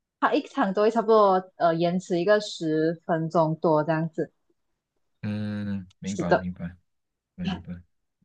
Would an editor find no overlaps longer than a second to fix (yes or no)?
yes